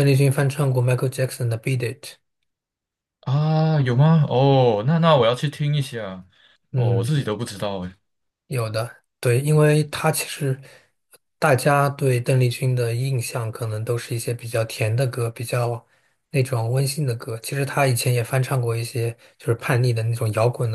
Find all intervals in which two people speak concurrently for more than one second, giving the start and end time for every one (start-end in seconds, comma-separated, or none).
none